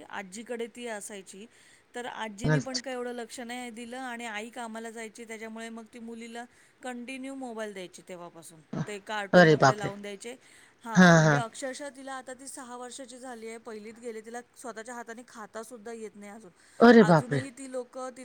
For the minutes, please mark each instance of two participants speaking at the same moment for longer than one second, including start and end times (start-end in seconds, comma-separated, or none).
none